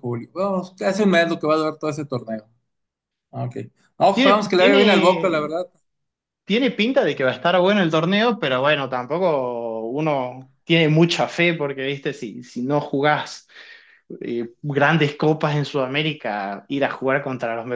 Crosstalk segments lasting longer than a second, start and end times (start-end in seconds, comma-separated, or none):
4.1-5.6